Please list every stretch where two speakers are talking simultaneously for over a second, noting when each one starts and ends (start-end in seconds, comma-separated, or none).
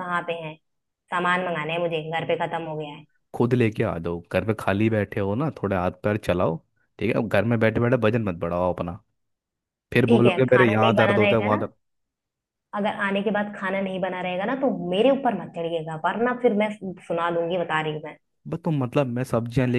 10.0-11.7